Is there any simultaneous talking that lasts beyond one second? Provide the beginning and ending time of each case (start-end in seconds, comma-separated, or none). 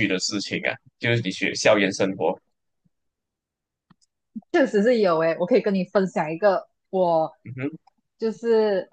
none